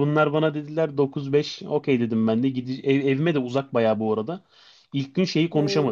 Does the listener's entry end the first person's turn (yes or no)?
no